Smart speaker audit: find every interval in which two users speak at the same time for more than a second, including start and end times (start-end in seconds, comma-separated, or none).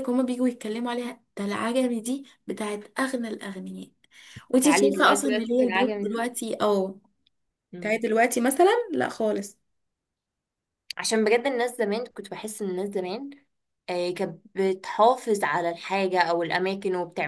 4.6-6.2